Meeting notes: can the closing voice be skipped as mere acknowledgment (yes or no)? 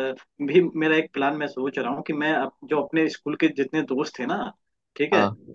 yes